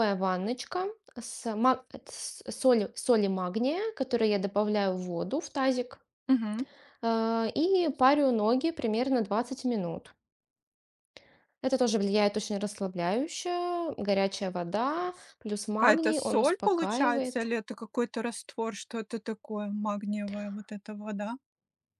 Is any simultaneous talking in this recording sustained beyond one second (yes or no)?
yes